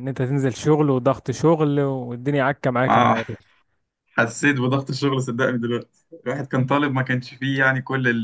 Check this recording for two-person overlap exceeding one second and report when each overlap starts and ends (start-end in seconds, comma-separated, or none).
none